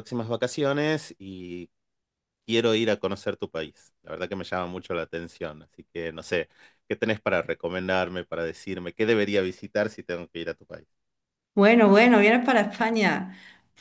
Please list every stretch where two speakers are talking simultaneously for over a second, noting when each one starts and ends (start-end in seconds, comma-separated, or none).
none